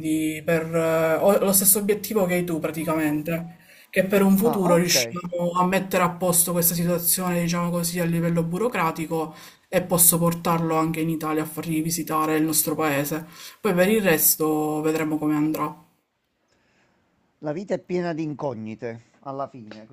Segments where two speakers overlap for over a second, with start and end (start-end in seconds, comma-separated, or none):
none